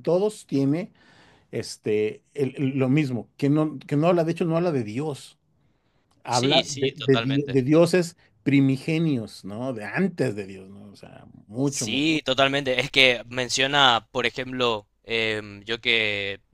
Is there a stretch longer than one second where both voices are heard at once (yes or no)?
yes